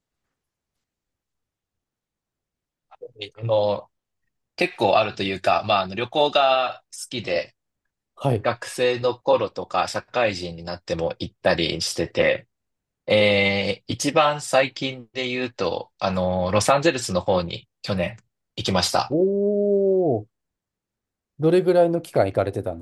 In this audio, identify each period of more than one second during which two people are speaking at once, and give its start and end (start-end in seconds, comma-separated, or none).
none